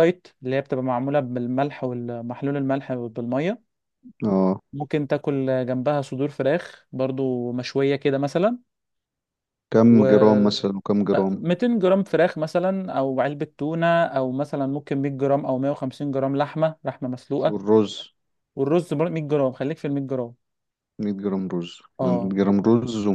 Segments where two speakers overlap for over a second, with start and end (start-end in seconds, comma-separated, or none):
none